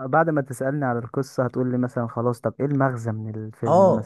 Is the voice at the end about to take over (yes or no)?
yes